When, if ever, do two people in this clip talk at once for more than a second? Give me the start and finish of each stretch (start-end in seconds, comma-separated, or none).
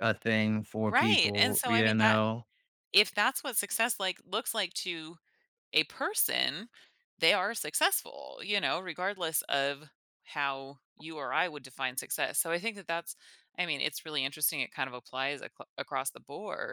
0.9-2.2